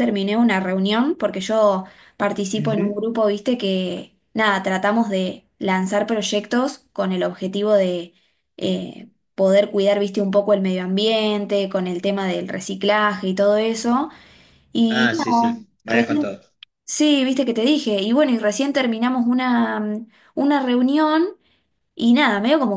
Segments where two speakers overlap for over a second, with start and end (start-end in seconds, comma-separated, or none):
14.9-16.4